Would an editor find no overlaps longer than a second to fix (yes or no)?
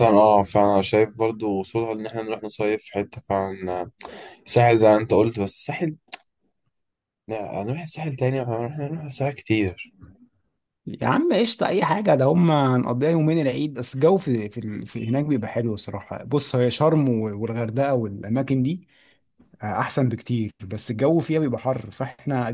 yes